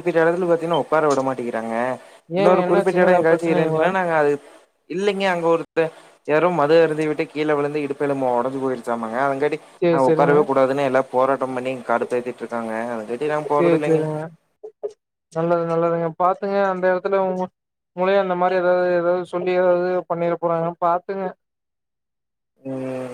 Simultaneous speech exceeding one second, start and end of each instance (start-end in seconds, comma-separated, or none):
2.4-3.9